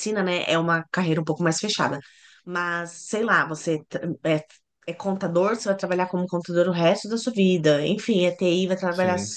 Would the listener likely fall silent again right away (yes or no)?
yes